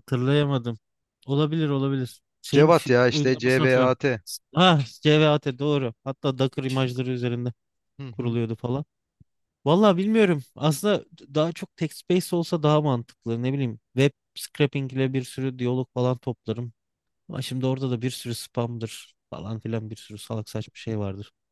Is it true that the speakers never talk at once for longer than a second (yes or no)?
no